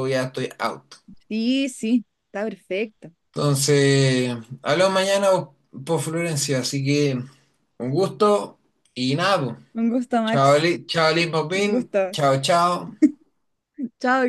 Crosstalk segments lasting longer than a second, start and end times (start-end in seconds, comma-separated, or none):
none